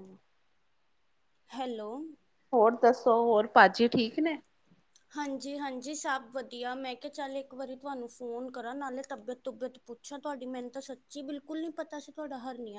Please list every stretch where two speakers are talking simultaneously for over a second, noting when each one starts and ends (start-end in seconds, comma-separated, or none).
none